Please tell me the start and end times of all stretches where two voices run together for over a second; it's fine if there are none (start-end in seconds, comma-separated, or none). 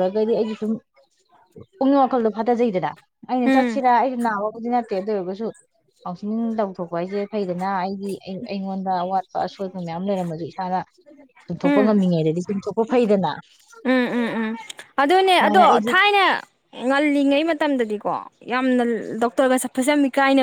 none